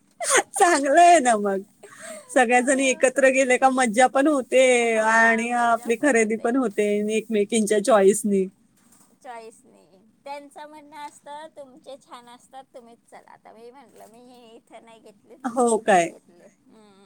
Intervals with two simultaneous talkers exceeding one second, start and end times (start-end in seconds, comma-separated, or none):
none